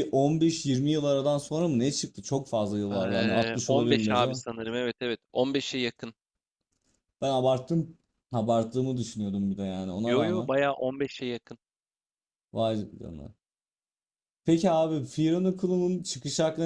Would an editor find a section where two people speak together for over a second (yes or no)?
yes